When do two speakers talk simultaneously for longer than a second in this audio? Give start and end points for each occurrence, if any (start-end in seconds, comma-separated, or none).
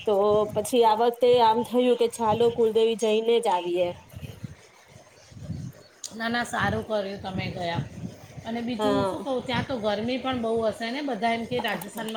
none